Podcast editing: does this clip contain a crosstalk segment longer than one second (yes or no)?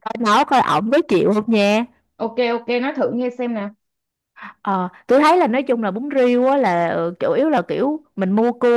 no